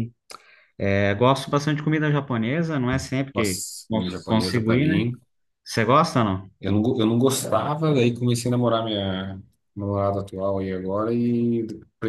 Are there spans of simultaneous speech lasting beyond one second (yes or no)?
yes